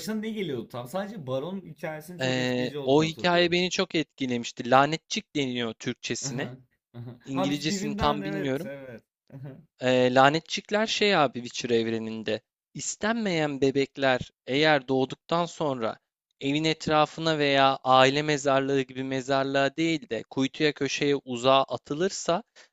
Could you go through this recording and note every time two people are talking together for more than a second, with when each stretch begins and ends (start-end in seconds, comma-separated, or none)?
2.2-3.6, 7.2-8.7